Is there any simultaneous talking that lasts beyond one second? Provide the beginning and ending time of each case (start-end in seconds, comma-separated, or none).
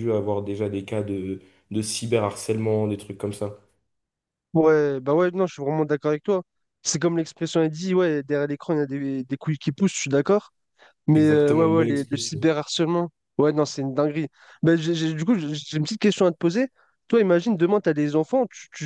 11.2-12.4